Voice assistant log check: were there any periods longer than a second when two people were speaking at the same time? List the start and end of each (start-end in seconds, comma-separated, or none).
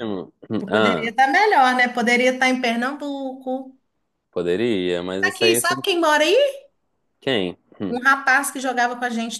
none